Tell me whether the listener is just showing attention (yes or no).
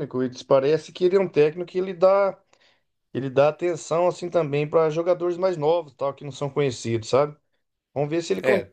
yes